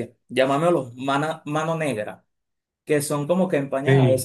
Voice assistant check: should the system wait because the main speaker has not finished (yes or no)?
yes